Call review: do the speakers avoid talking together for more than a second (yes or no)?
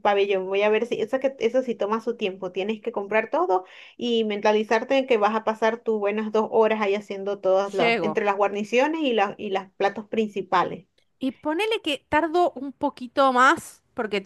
yes